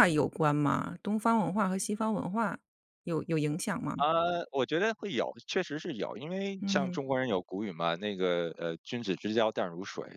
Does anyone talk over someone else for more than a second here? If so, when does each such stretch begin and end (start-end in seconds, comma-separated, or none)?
none